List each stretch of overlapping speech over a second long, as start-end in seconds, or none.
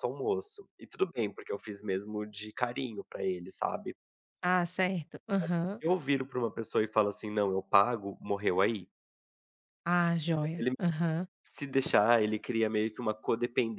none